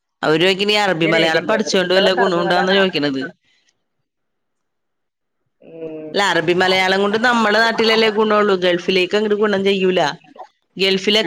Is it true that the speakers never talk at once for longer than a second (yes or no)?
no